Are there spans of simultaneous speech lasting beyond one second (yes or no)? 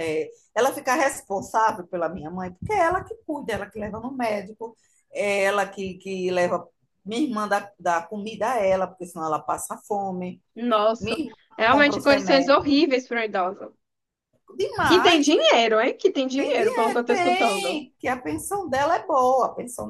yes